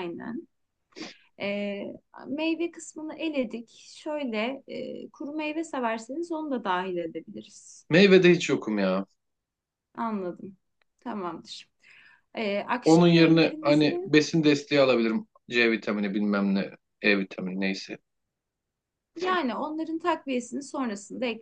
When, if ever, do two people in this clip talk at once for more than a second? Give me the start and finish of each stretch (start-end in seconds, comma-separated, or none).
12.8-14.1